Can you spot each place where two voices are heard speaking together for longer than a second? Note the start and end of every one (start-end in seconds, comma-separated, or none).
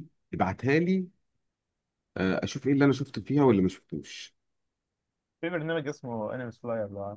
none